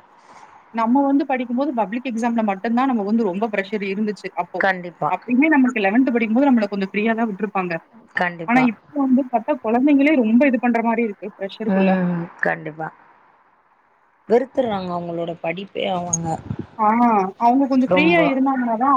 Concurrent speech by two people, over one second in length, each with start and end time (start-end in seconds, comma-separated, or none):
none